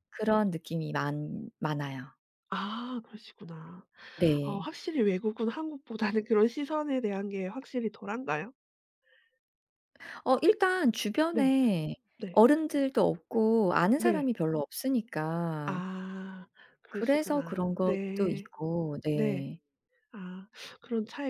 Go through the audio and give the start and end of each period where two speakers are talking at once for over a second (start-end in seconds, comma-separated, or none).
16.9-18.5